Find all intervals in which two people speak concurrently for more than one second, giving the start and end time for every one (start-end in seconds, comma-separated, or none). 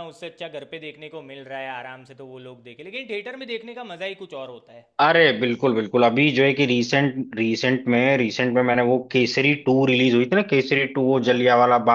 none